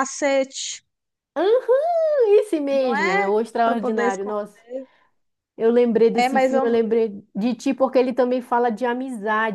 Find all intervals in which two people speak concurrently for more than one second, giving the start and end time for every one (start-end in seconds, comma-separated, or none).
2.8-4.4